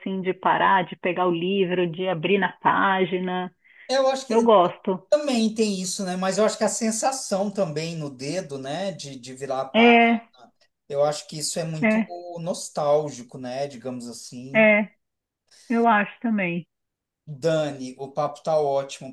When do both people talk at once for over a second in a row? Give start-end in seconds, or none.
none